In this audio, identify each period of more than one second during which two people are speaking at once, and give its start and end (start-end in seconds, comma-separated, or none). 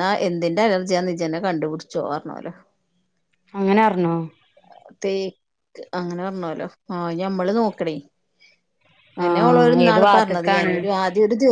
9.2-10.7